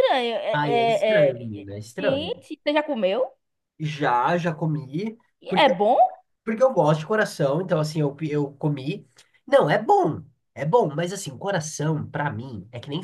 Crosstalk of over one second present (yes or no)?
yes